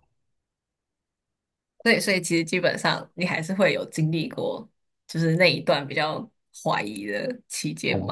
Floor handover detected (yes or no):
yes